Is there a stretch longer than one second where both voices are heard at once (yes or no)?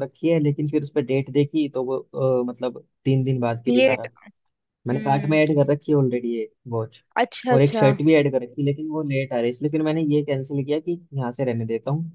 no